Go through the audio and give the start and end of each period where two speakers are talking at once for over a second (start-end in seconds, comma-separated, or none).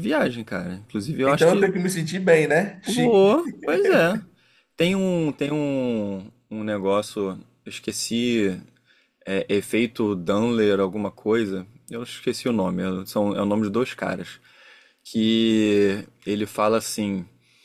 none